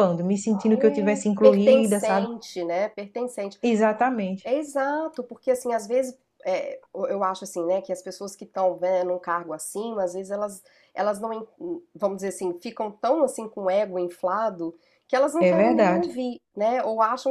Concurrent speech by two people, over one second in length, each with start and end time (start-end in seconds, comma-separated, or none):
0.7-2.3